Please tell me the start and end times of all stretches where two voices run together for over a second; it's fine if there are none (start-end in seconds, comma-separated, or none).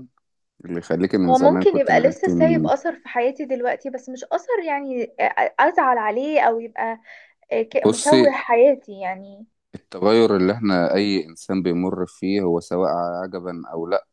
1.3-2.7